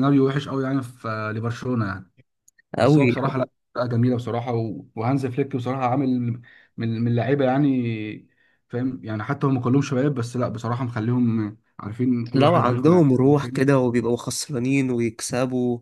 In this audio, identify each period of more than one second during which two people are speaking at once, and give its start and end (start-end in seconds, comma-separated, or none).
12.3-13.6